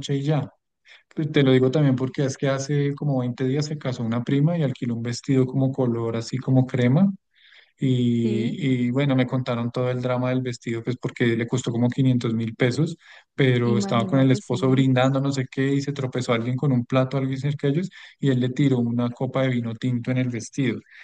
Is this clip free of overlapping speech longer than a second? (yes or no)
no